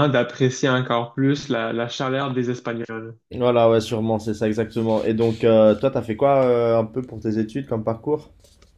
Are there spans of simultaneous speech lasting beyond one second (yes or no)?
no